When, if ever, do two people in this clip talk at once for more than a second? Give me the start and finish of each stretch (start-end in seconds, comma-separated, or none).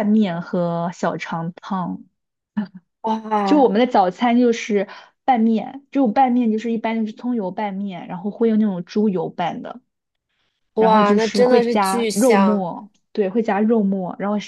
10.8-12.7